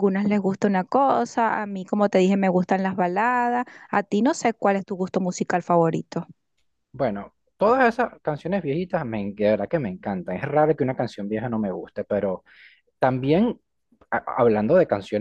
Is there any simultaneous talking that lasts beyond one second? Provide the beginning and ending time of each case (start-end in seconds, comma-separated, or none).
none